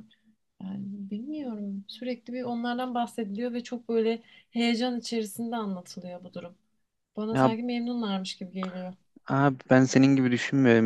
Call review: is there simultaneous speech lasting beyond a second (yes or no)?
no